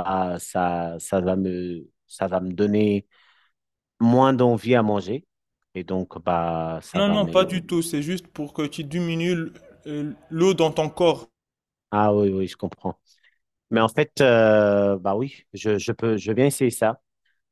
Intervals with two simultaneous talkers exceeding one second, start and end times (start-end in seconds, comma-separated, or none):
none